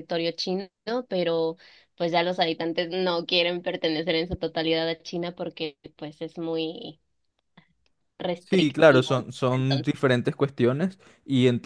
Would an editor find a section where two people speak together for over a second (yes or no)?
yes